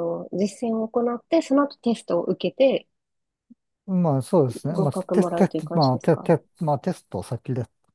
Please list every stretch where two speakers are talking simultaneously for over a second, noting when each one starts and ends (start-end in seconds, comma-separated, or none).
4.7-6.3